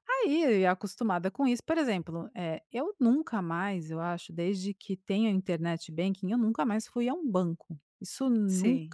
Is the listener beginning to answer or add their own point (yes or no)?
no